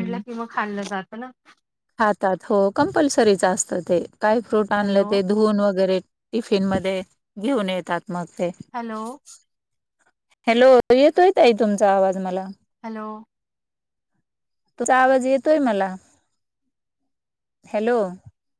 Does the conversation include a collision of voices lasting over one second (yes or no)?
no